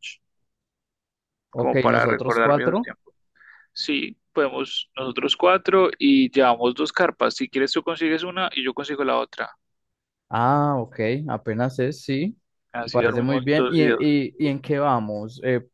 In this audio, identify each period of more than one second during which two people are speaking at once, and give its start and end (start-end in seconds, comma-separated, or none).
1.5-2.9, 12.8-14.1